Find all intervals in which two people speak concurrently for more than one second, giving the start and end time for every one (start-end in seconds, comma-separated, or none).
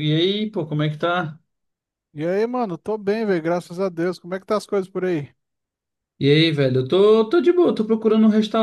none